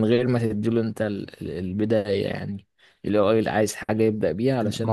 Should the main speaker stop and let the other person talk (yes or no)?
yes